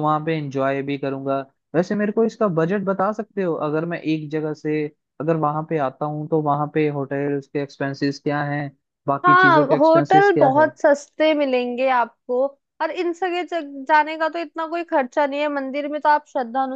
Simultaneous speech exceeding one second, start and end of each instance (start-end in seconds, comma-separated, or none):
9.2-10.7